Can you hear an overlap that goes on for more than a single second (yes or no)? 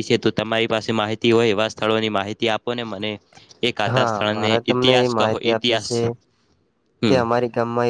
yes